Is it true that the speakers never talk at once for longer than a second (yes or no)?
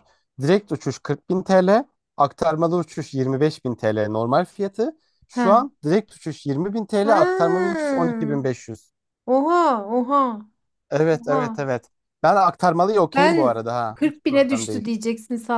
no